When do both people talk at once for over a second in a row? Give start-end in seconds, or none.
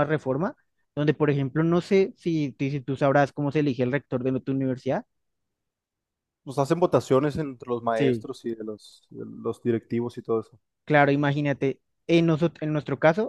none